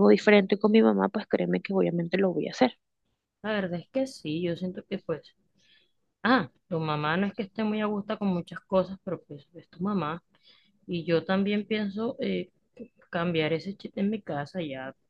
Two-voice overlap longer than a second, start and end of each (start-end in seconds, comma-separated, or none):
none